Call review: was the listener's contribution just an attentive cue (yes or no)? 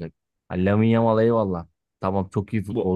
yes